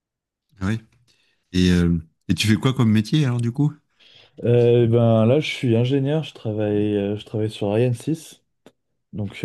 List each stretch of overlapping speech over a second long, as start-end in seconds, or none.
none